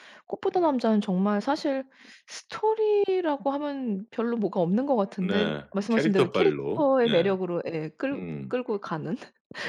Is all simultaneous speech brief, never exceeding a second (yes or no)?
no